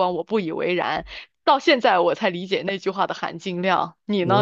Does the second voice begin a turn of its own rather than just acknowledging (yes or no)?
yes